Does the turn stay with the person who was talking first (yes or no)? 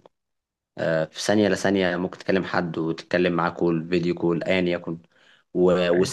yes